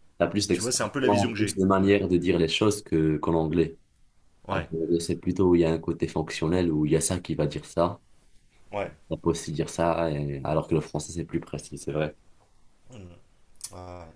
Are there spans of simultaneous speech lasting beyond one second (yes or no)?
yes